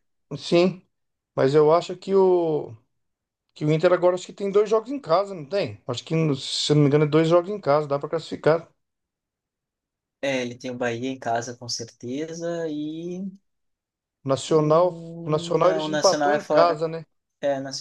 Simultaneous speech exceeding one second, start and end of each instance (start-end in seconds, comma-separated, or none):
14.5-16.8